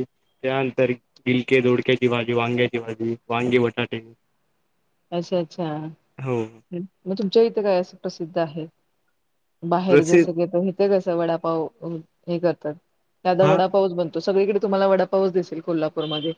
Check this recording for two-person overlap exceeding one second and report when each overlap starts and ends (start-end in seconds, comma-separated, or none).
none